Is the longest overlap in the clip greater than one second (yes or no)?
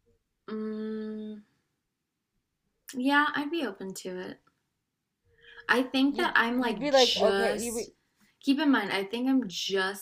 yes